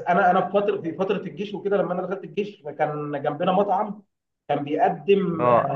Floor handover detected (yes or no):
no